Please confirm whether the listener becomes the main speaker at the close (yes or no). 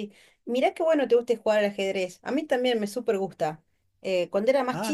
no